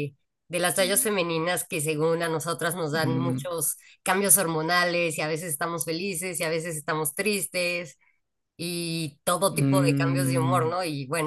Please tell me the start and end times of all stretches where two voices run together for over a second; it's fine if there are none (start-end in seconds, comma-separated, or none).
9.5-10.7